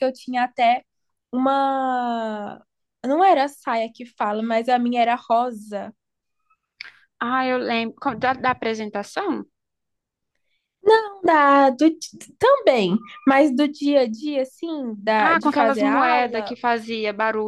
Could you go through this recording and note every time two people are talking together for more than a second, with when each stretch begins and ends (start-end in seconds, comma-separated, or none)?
15.2-16.6